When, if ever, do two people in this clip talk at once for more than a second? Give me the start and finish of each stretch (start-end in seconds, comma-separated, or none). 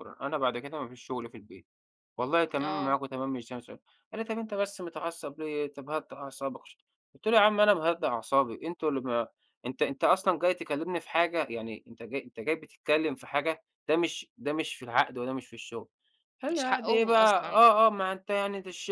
16.5-17.7